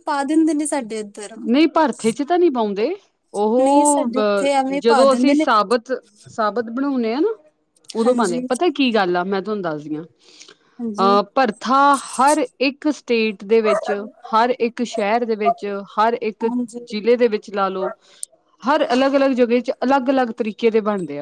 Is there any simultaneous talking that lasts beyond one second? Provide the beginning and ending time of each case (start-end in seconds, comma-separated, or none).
3.6-5.5